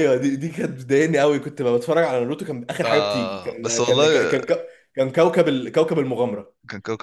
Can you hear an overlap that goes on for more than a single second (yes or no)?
yes